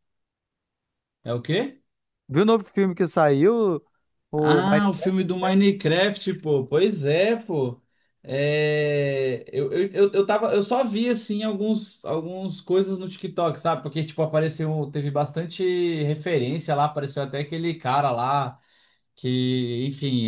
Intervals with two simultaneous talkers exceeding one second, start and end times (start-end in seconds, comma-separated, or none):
4.3-5.6